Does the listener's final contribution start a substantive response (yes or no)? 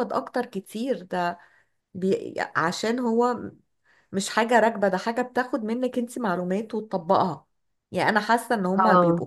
no